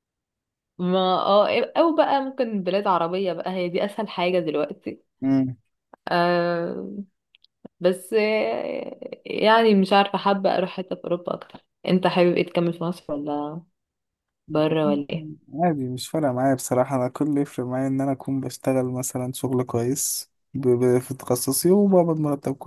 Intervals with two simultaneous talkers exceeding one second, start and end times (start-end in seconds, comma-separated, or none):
none